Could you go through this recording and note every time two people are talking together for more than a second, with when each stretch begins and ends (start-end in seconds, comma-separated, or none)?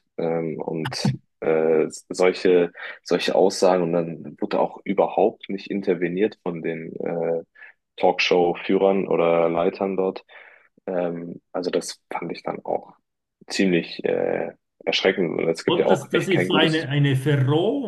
15.7-16.9